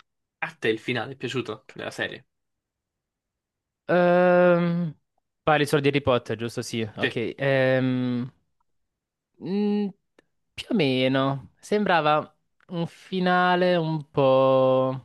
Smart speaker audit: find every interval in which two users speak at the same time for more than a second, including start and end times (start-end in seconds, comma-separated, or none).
none